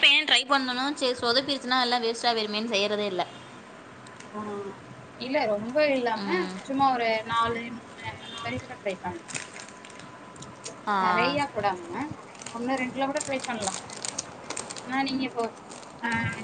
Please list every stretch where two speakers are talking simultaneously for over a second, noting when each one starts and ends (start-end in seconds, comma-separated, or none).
none